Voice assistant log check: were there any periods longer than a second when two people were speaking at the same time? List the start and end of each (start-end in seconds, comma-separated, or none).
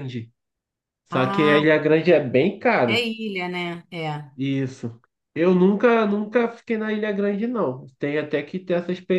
none